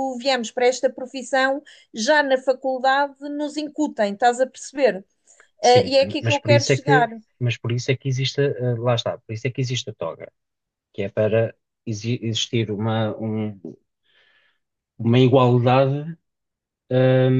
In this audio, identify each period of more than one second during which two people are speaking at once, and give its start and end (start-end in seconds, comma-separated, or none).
5.6-7.1